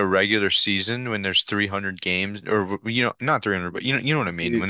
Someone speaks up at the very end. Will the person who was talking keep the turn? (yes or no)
yes